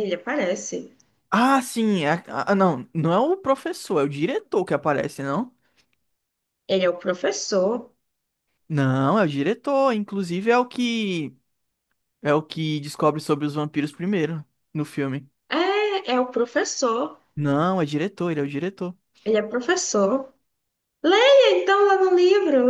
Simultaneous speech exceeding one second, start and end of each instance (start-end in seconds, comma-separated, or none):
none